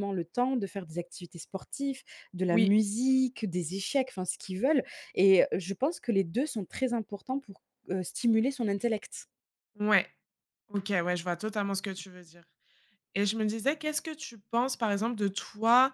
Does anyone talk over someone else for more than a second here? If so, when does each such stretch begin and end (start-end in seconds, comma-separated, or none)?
none